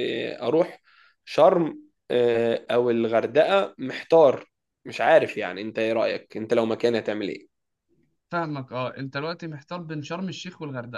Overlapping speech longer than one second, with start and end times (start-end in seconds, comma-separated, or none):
none